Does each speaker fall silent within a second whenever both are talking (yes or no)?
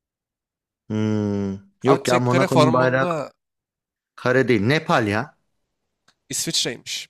no